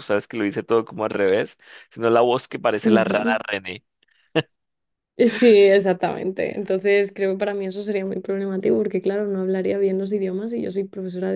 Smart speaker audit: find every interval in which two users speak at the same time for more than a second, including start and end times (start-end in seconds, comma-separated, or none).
none